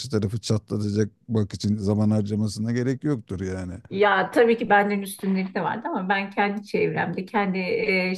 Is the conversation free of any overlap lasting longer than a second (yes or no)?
yes